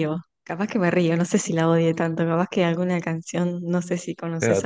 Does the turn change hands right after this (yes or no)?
no